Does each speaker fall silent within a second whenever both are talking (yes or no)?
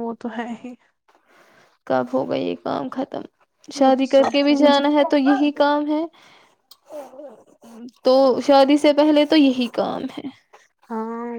no